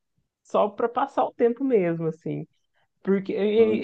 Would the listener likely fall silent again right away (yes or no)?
yes